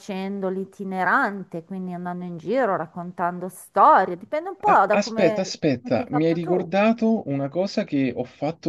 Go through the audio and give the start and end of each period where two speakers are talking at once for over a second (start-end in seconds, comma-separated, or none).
4.6-6.8